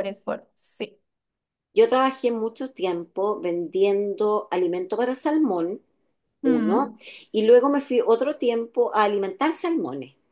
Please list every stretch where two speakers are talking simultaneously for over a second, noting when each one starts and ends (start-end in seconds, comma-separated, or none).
none